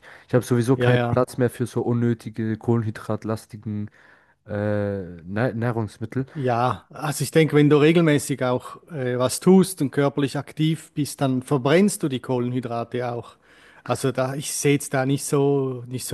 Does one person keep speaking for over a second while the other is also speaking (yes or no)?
no